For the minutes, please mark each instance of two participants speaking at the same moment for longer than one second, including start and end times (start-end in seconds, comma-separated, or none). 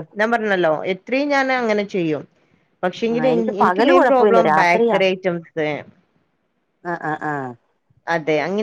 3.1-5.0